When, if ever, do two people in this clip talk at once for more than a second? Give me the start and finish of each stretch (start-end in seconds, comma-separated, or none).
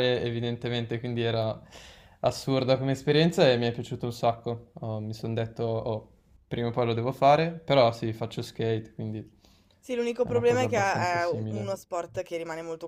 10.2-11.8